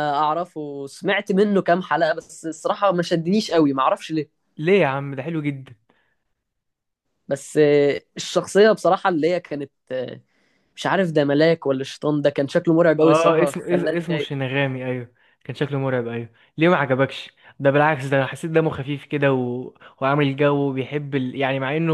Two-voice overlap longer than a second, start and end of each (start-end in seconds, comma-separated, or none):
13.0-14.3